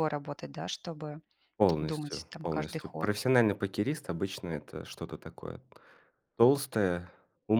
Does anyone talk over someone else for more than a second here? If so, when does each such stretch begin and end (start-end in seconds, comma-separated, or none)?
1.8-3.1